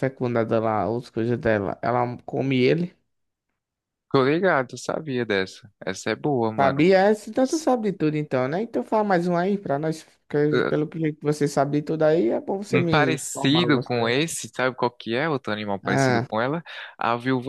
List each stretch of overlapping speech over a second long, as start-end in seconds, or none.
12.7-14.2